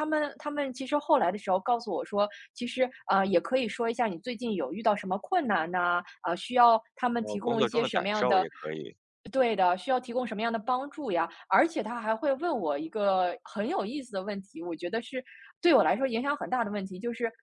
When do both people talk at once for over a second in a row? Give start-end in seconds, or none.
7.2-8.5